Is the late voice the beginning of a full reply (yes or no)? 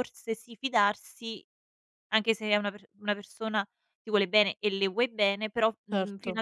no